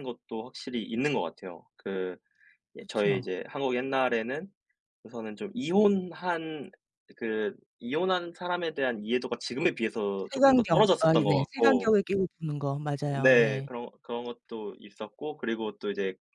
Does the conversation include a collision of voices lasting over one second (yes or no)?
yes